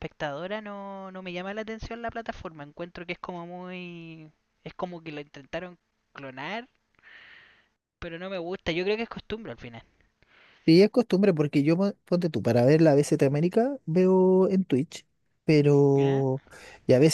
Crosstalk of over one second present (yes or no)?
no